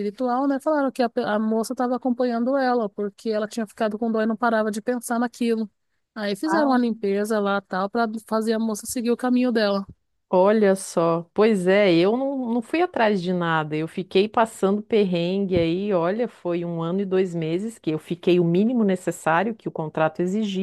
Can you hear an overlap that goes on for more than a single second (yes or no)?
no